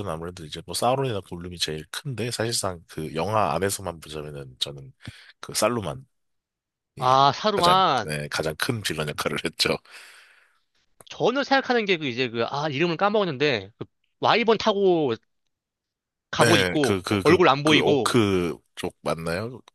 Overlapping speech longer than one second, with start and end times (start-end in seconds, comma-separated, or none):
16.4-18.2